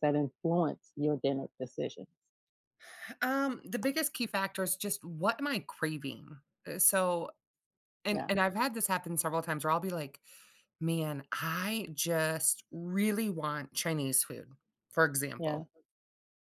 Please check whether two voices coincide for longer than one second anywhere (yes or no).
no